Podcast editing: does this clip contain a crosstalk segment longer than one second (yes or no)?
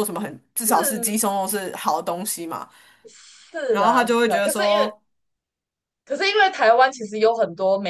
yes